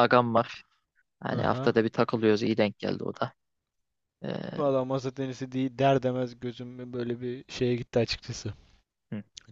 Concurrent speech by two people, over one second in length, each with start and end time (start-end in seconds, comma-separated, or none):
none